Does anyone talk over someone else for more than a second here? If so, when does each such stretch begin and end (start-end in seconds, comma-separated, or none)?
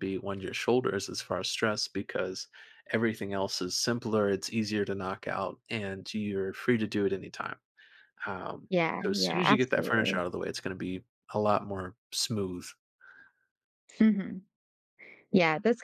8.7-10.2